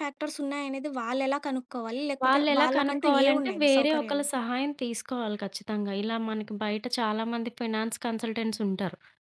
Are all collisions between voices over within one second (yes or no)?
no